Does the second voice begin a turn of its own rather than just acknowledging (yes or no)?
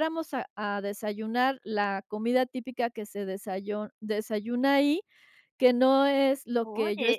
yes